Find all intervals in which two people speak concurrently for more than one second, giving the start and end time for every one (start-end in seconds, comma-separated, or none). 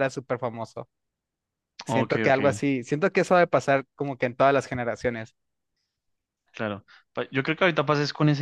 none